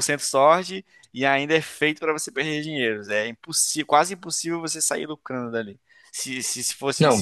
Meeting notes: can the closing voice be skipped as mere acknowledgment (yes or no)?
yes